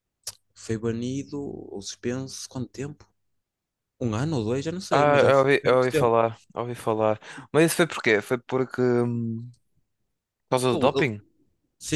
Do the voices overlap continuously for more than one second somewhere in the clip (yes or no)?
yes